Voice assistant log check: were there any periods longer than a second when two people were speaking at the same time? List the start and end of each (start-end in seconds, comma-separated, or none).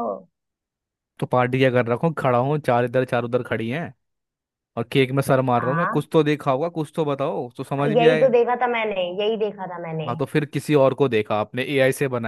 none